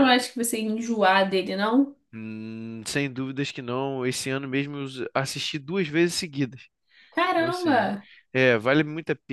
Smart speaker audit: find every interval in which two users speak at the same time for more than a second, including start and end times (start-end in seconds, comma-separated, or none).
none